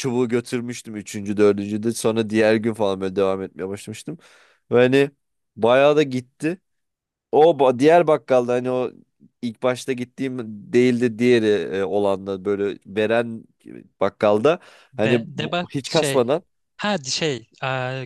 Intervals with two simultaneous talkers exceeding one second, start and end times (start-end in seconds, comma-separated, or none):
15.0-16.4